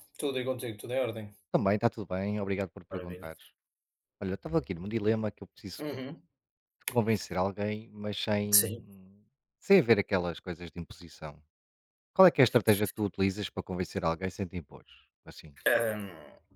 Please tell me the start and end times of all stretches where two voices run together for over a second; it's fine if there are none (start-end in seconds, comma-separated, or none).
none